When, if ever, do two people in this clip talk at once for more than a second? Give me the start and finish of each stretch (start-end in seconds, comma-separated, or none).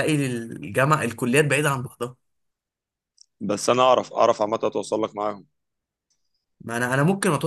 none